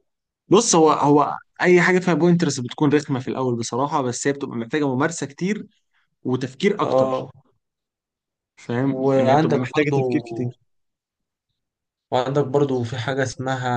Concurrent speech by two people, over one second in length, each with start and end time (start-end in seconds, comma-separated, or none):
8.8-10.2